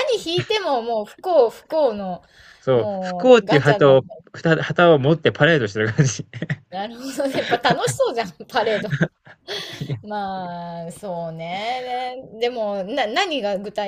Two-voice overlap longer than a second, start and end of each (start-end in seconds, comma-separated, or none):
2.7-4.0